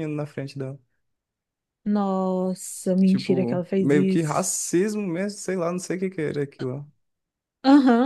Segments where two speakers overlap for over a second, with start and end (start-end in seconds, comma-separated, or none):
3.0-4.5